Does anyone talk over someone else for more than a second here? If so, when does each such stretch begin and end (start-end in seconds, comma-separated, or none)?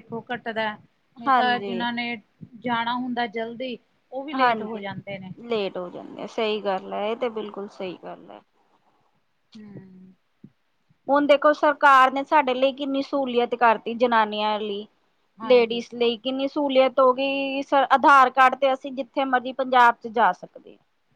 none